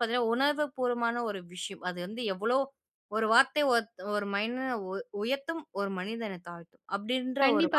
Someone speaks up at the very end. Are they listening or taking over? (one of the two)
taking over